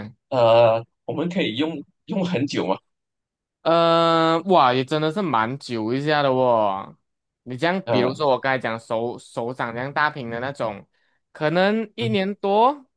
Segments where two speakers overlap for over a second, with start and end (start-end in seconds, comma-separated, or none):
none